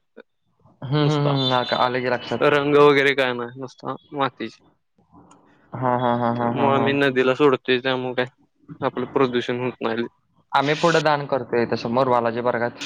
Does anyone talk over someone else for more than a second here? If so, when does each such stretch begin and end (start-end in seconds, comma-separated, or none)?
none